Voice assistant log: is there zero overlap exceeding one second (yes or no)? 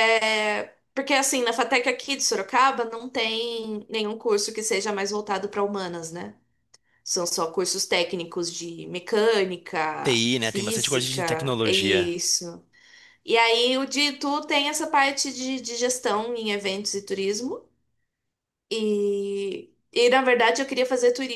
no